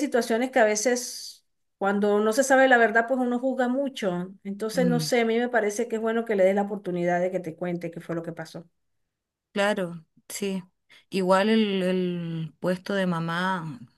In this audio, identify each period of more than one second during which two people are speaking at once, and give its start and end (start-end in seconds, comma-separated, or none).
none